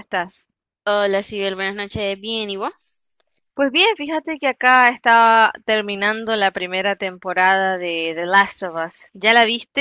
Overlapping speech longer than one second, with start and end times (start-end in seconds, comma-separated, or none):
none